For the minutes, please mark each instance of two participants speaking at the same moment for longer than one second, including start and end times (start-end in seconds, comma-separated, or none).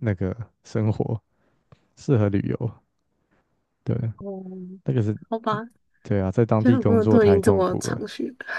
6.6-8.0